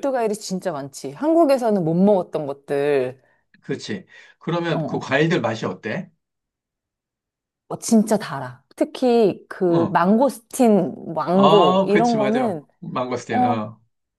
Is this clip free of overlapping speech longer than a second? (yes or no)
no